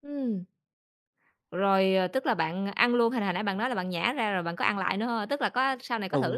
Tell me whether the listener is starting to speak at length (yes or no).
yes